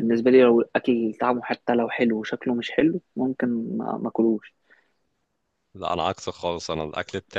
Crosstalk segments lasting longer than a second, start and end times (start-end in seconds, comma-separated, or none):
none